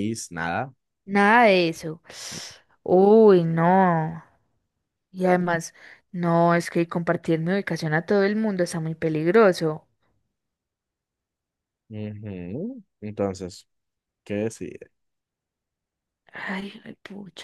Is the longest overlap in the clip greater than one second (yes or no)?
no